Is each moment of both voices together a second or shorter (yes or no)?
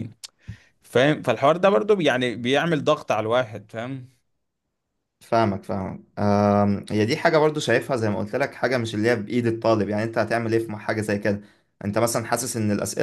yes